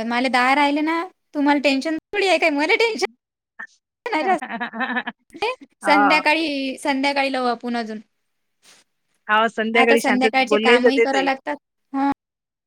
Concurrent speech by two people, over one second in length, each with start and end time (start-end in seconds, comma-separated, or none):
9.8-11.2